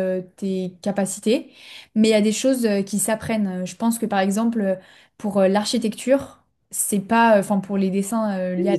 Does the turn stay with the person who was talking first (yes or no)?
no